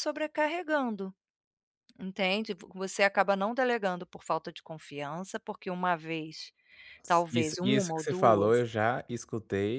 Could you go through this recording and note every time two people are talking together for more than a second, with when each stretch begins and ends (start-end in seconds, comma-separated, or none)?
7.3-8.7